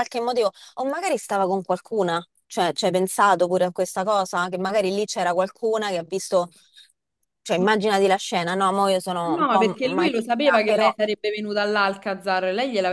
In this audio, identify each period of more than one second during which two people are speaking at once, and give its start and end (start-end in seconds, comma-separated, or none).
9.2-10.9